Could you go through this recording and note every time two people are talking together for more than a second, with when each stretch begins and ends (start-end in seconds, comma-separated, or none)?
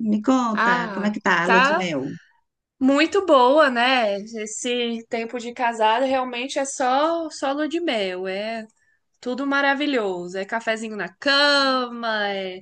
0.5-1.9